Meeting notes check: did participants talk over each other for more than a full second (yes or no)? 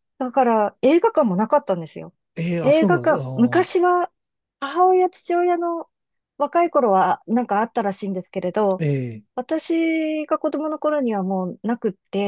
yes